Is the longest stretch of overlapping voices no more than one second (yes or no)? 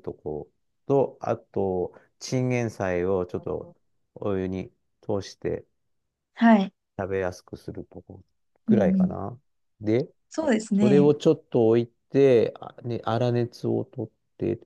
yes